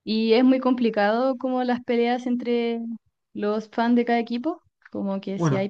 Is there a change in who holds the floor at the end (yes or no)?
no